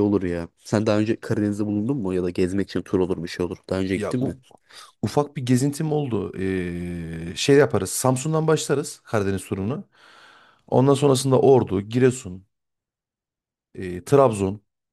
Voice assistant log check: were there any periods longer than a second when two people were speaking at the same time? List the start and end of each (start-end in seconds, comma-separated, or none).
none